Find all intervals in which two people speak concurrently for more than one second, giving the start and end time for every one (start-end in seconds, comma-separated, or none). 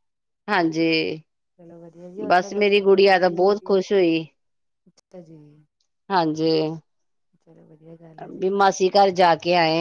2.3-3.7